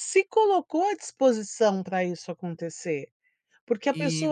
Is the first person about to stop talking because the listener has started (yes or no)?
no